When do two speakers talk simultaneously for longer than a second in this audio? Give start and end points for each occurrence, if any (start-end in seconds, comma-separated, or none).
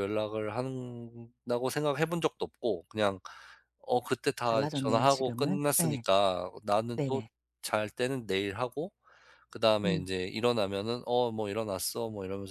4.4-6.0